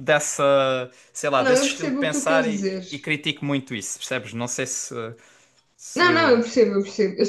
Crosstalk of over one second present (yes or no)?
yes